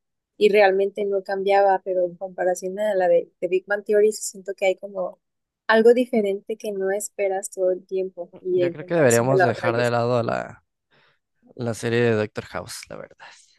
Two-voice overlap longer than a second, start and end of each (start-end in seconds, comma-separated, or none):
8.5-9.8